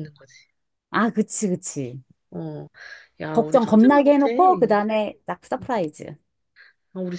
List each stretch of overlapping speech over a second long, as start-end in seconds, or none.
3.3-4.8